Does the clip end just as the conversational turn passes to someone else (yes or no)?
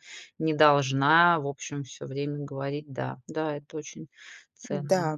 yes